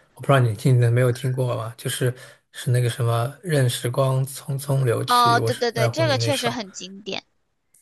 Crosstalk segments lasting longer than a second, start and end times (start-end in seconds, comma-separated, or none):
5.1-6.5